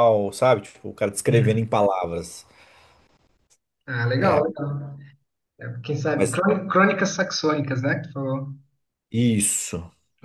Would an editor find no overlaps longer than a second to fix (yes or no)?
yes